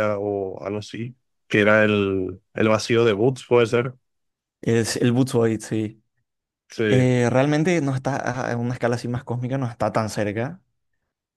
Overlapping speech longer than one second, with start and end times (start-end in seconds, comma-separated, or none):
none